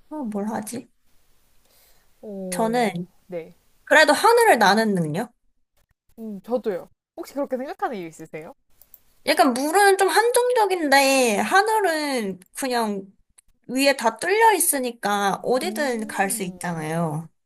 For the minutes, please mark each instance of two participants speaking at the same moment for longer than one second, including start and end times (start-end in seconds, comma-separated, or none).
15.6-16.9